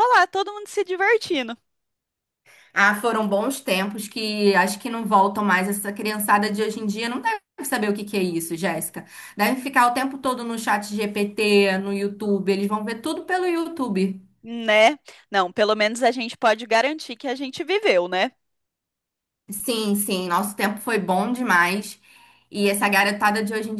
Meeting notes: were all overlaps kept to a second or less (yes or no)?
yes